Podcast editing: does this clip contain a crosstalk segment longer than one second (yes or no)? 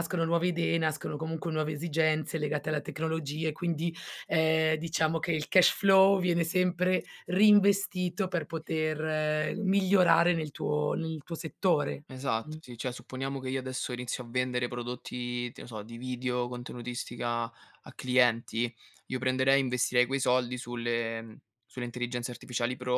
no